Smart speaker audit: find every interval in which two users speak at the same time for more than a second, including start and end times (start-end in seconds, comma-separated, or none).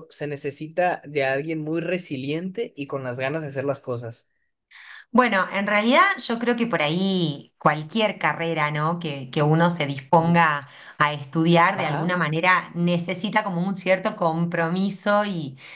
none